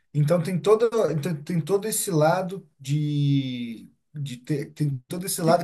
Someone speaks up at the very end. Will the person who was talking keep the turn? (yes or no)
yes